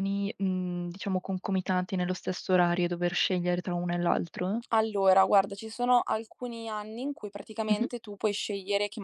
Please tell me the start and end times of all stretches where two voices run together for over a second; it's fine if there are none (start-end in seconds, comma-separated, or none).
none